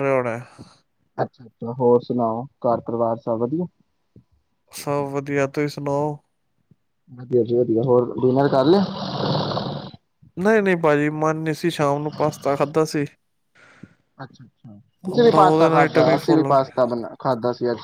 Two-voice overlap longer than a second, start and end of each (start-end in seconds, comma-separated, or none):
15.1-16.7